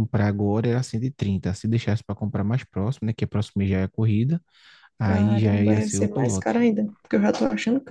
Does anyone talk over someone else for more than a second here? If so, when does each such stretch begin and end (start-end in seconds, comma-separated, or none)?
5.0-6.5